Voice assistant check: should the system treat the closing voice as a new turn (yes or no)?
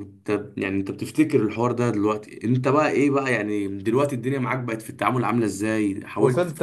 yes